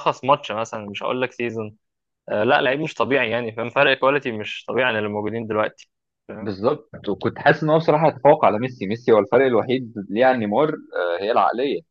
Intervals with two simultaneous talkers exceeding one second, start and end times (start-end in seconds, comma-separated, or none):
none